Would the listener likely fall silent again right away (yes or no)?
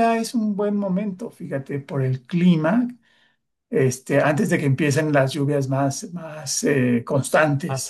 no